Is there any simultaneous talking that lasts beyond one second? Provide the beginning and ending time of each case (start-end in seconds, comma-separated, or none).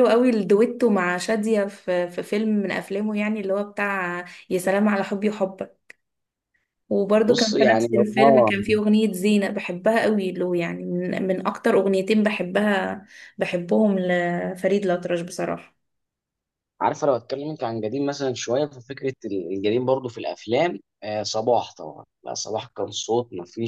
7.3-8.5